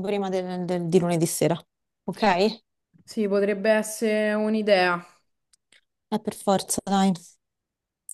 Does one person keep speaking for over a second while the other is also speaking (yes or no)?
no